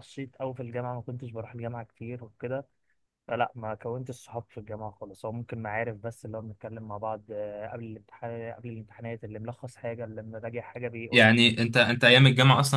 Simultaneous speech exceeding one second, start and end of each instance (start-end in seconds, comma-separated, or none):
none